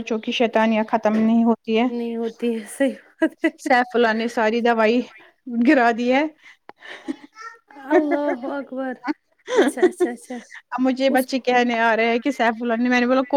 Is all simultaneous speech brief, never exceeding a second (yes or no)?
yes